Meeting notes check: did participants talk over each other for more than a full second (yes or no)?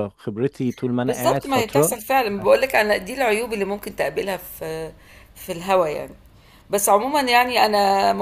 yes